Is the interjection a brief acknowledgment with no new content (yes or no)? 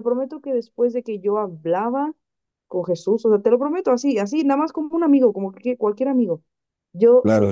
yes